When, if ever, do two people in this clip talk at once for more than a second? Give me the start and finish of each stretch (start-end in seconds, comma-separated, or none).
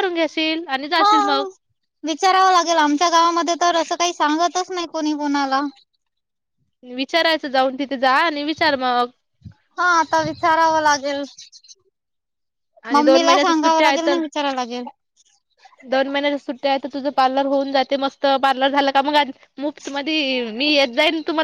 12.9-14.2